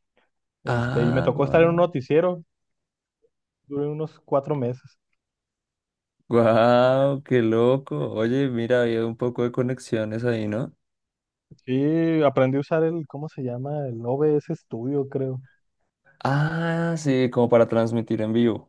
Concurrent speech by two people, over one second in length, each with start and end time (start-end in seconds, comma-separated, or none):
0.7-1.9